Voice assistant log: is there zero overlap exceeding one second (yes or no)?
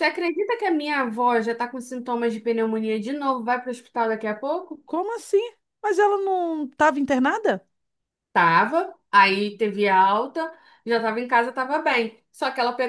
yes